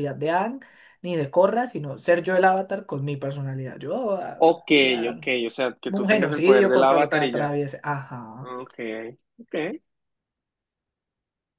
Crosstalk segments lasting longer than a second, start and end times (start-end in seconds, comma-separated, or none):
5.9-7.5